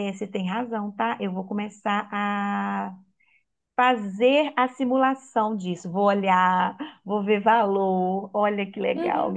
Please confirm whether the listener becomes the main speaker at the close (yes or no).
yes